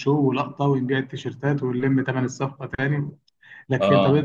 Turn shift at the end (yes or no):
no